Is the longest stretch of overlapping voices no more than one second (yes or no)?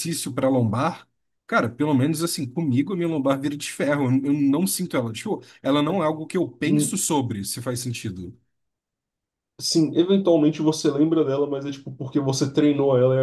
yes